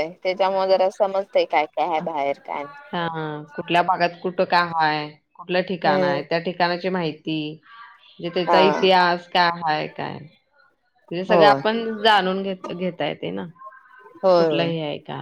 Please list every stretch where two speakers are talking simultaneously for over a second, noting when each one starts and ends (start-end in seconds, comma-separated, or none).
none